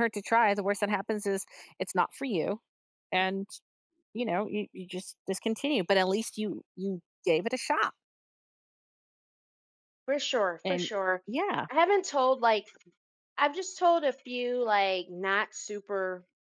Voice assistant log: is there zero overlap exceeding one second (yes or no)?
yes